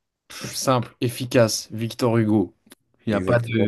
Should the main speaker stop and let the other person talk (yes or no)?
yes